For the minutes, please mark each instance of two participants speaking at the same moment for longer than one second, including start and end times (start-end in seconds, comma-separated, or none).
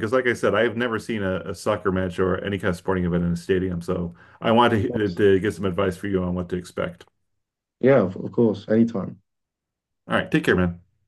none